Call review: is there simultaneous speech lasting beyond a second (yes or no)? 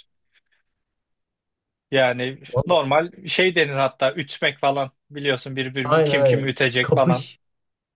yes